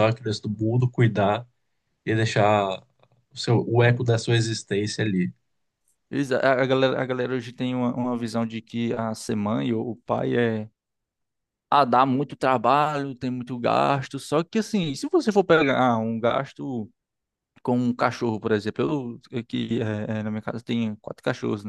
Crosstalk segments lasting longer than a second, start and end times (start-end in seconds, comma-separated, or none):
none